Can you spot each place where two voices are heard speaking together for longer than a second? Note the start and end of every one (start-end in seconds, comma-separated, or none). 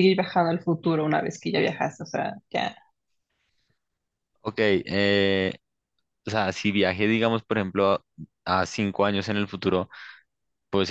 none